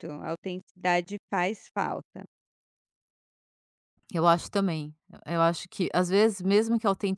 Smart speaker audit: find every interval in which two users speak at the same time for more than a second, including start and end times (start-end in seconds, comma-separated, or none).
none